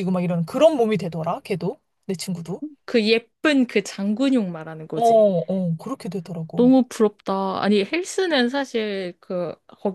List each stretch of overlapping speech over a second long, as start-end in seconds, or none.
none